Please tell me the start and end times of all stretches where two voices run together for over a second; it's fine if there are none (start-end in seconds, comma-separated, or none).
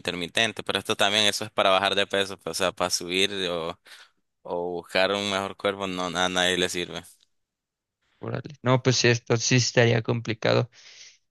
none